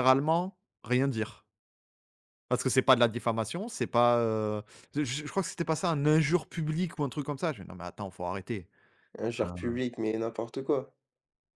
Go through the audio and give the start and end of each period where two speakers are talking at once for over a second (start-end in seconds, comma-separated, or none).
none